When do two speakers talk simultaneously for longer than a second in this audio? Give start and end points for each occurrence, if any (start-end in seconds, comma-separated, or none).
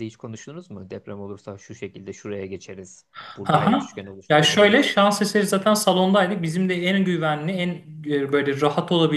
3.5-4.9